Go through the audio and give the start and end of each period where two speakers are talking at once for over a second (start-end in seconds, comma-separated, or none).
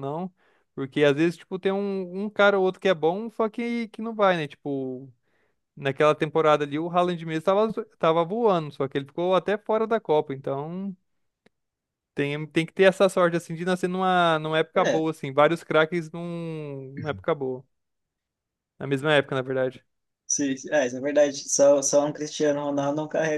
none